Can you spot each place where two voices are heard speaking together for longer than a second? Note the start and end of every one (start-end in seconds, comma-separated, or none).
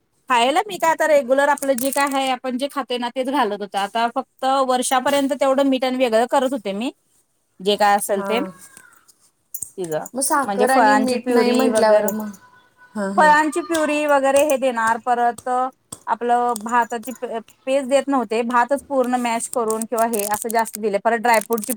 10.4-12.1